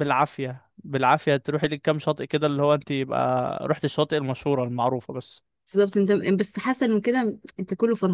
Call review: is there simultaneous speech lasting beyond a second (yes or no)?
no